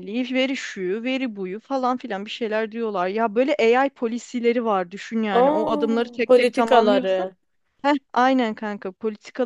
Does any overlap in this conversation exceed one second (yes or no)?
yes